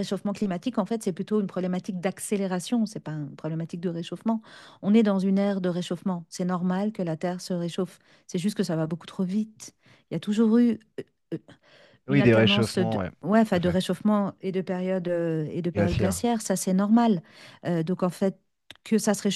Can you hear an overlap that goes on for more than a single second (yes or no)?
yes